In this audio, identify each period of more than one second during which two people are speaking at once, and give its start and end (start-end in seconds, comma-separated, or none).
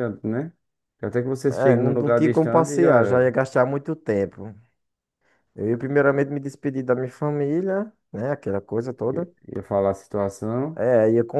1.5-3.3